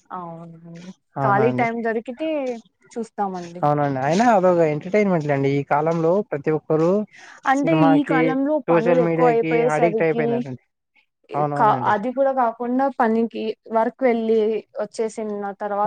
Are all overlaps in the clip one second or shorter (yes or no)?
no